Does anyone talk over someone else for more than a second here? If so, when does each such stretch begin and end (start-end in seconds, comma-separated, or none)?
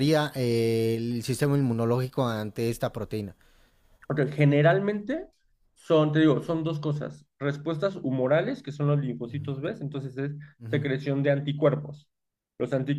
none